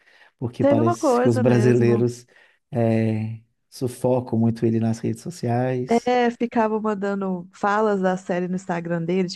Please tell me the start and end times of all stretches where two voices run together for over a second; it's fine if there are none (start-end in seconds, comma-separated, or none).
0.6-2.0